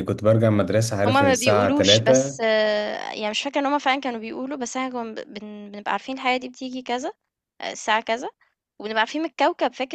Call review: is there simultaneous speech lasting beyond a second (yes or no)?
yes